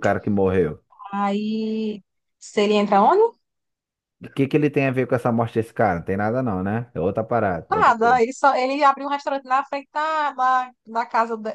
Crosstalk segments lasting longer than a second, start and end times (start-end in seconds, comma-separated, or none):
none